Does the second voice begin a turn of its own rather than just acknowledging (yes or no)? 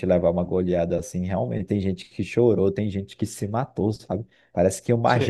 no